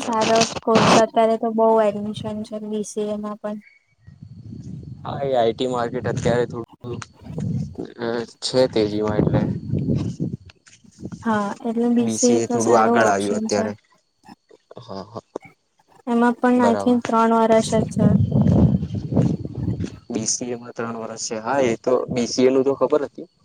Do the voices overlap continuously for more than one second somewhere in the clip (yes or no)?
yes